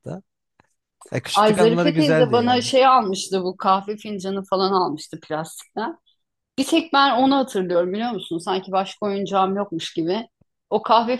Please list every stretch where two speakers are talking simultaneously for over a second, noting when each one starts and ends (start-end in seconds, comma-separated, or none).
1.3-2.7